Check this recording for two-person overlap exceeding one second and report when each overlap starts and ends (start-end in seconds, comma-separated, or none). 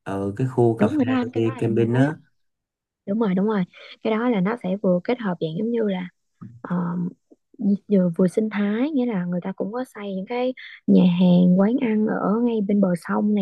0.8-2.1